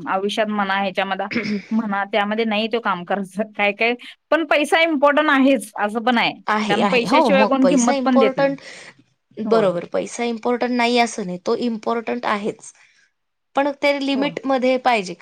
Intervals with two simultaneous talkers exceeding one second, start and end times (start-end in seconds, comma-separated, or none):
6.7-8.5